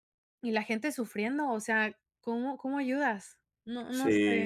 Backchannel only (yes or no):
no